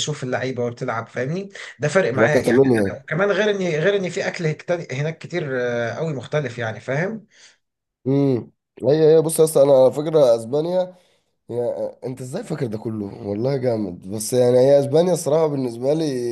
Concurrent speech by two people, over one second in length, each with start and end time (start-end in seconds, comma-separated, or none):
none